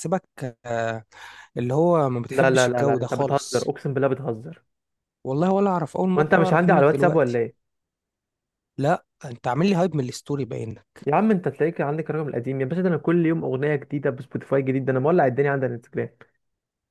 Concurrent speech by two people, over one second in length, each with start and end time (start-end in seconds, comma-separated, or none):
2.3-3.7, 6.2-7.4